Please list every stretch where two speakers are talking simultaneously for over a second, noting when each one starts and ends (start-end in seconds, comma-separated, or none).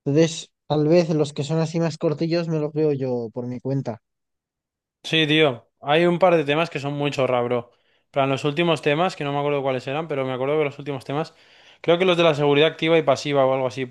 none